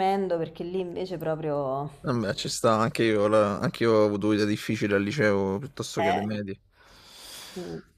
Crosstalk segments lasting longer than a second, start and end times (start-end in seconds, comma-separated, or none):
none